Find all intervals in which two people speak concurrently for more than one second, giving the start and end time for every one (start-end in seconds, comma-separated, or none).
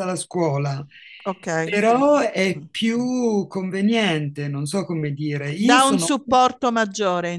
none